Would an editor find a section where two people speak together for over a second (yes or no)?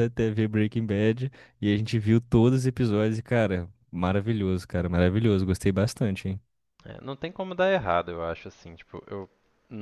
no